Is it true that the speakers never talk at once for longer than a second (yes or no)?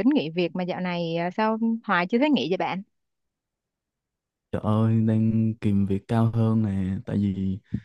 yes